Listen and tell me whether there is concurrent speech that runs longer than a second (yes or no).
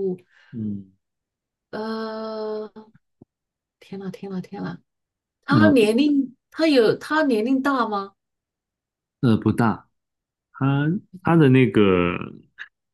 no